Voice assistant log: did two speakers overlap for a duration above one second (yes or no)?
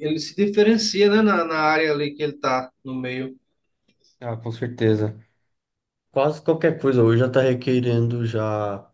no